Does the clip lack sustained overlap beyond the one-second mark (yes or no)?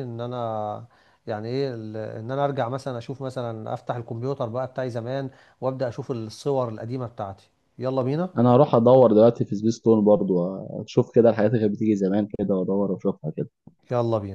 yes